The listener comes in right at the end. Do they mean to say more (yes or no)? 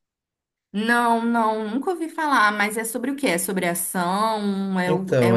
yes